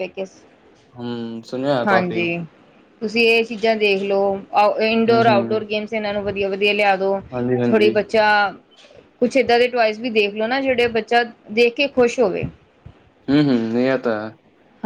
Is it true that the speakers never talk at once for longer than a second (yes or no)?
yes